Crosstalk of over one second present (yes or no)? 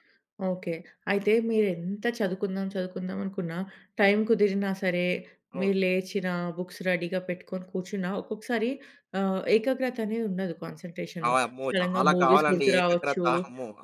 yes